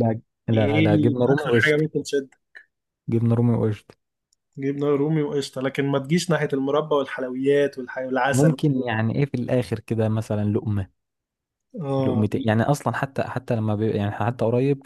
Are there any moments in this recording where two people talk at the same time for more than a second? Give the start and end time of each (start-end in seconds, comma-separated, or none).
0.5-1.8